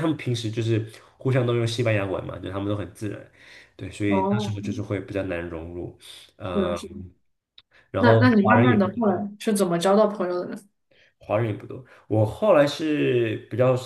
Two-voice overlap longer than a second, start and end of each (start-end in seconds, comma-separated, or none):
8.0-9.2